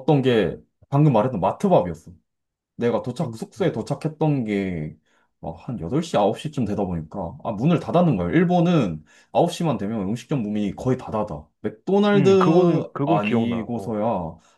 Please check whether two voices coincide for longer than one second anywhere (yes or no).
yes